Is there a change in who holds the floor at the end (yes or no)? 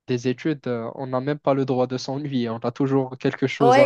yes